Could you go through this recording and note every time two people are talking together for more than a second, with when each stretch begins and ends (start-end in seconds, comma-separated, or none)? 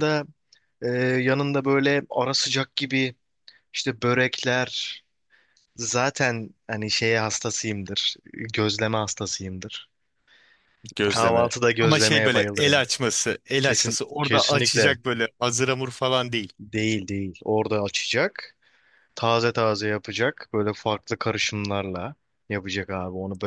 11.1-12.8, 13.6-14.9